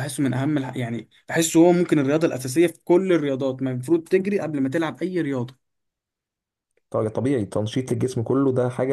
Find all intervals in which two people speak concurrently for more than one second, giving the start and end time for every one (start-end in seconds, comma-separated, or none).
none